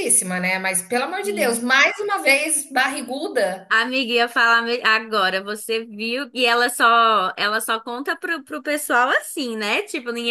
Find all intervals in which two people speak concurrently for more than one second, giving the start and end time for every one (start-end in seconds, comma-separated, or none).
none